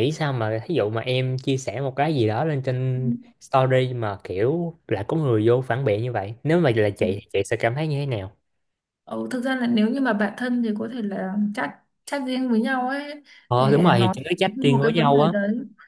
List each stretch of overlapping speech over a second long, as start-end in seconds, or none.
13.5-15.3